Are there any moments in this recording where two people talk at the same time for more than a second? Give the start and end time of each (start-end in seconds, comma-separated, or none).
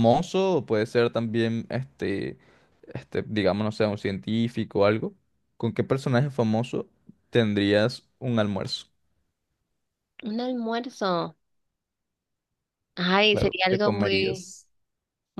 13.3-14.5